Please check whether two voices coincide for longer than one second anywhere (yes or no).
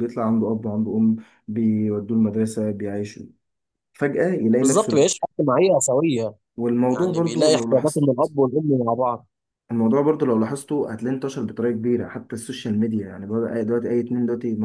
yes